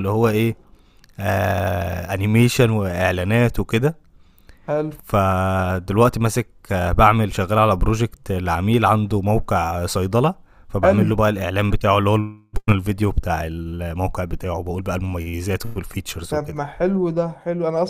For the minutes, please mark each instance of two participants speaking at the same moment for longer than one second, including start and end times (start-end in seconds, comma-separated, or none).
none